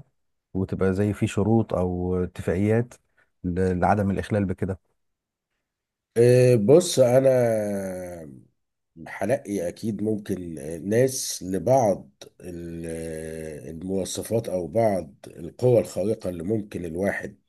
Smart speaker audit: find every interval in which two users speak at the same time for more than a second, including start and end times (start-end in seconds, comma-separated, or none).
none